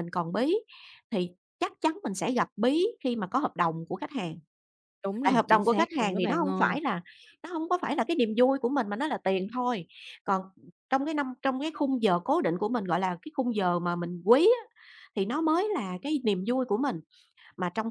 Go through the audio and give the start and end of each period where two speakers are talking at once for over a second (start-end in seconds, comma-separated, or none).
5.2-6.8